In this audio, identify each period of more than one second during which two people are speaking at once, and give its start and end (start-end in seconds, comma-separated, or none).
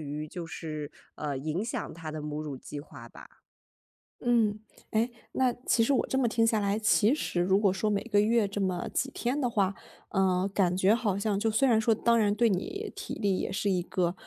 none